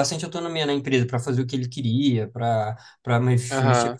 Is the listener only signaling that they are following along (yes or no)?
yes